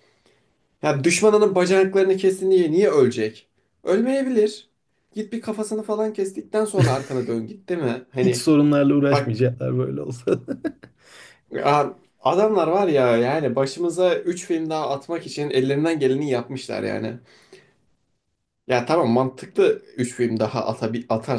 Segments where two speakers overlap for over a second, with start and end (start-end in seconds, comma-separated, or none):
none